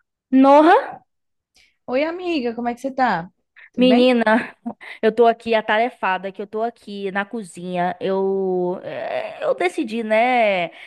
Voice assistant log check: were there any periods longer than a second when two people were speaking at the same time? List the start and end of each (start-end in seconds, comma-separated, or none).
none